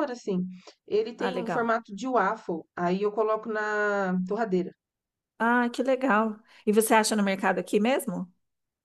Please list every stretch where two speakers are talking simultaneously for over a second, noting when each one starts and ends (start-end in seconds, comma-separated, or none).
none